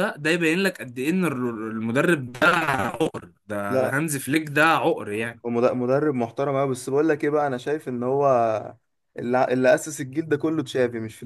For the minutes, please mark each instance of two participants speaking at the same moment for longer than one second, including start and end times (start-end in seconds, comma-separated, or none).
none